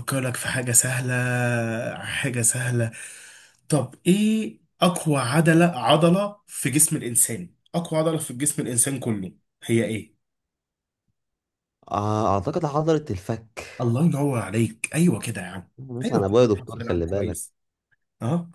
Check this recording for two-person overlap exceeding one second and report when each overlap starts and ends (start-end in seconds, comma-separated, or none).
15.8-17.4